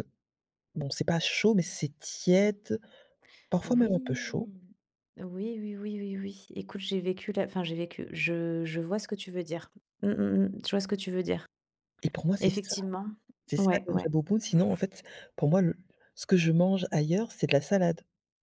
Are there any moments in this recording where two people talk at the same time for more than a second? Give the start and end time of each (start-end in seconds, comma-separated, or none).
none